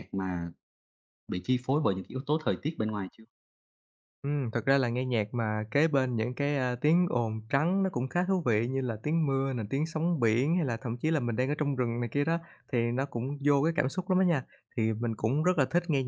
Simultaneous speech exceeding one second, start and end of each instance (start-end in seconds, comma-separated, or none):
none